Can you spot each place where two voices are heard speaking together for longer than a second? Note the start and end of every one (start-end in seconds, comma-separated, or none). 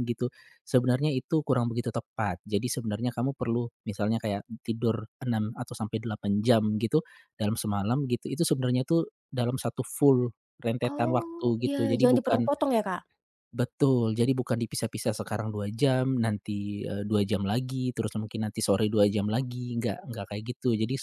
10.9-12.5